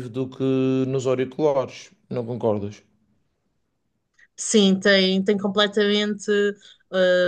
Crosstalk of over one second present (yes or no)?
no